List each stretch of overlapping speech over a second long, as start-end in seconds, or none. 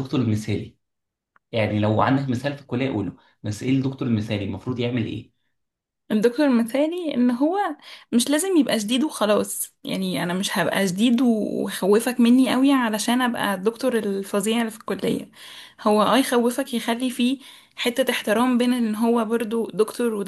none